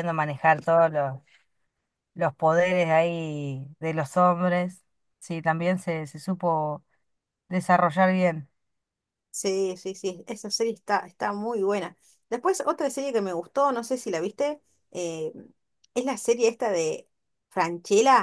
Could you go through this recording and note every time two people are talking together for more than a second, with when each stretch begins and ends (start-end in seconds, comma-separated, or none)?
none